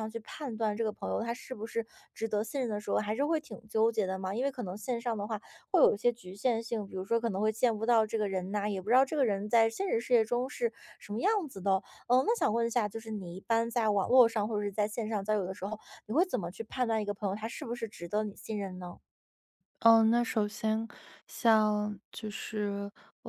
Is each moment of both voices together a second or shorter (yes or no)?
yes